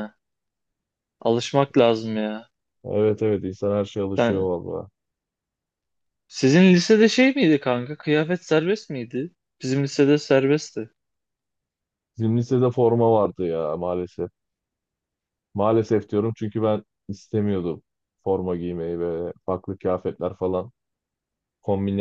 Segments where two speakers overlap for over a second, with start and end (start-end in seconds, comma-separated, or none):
none